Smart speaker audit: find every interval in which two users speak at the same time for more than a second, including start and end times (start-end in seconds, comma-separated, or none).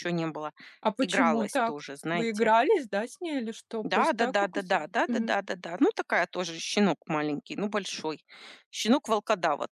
1.0-2.5, 3.8-5.3